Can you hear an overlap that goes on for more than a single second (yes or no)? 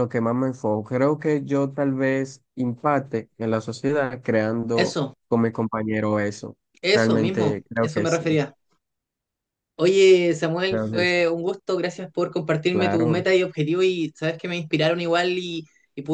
yes